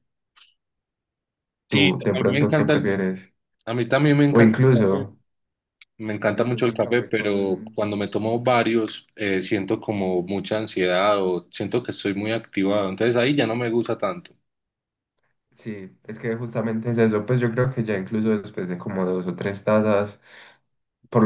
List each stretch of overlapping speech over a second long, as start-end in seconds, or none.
1.7-3.1, 6.3-7.8